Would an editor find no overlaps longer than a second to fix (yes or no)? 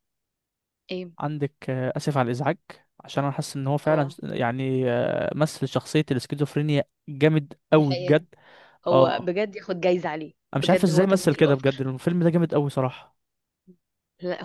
no